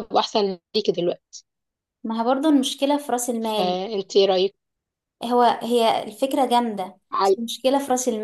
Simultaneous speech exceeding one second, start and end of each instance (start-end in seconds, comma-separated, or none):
none